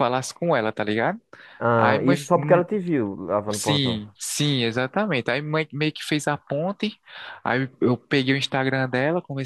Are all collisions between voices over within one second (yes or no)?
yes